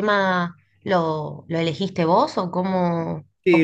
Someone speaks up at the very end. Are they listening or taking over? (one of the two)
taking over